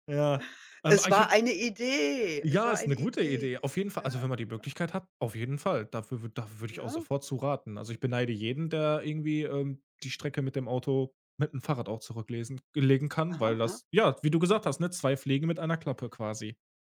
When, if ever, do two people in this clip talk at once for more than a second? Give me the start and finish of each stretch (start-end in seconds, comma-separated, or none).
2.4-4.7